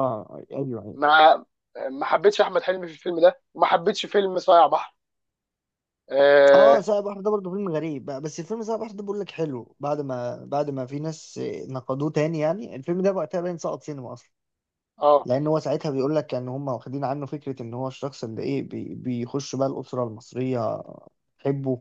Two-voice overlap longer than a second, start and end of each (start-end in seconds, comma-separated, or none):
none